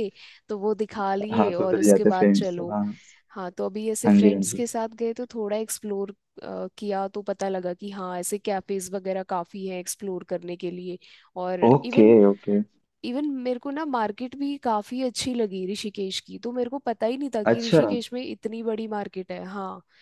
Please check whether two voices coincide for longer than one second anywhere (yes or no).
yes